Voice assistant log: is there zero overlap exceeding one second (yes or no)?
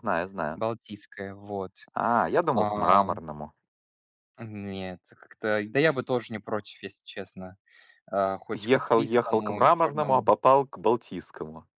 no